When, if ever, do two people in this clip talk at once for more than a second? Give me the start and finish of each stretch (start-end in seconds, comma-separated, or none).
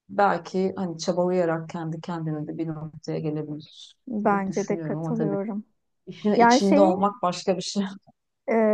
4.1-5.4